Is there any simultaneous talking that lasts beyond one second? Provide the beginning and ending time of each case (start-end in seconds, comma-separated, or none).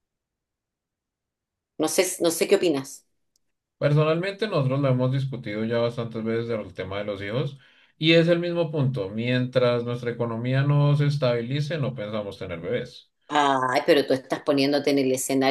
none